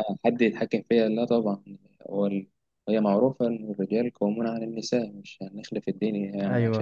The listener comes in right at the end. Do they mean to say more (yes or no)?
yes